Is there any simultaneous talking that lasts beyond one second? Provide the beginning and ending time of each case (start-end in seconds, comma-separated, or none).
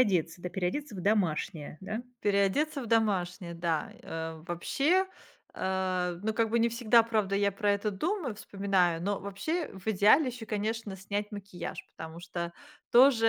none